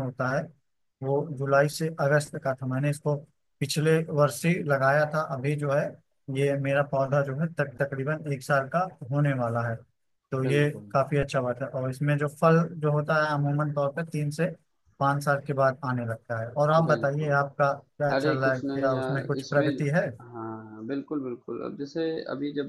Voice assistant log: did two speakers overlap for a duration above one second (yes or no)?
yes